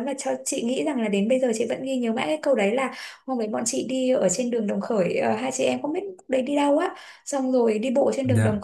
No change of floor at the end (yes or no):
yes